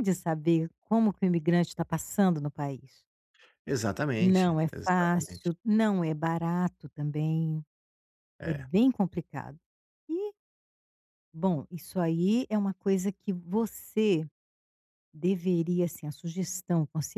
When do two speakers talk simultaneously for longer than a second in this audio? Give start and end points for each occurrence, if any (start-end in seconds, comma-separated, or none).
4.2-5.5